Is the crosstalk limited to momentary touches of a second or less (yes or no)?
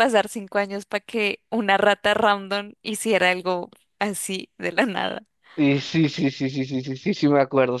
yes